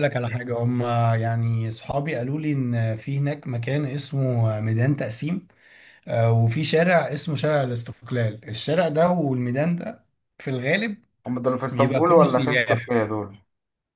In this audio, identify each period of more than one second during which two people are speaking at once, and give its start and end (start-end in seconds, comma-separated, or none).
11.7-12.9